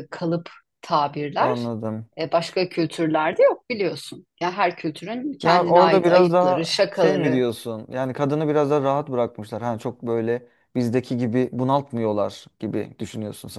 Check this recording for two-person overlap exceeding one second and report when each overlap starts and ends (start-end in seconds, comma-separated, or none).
5.4-7.4